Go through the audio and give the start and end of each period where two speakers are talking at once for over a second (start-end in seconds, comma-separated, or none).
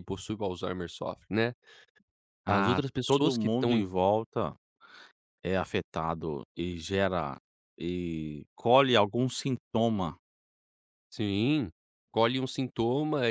2.5-3.9